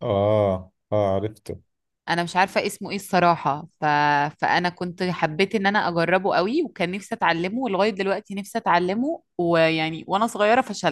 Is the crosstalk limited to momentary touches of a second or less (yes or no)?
yes